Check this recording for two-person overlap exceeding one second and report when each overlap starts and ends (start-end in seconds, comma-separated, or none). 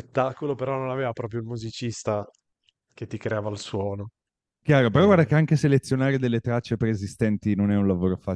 none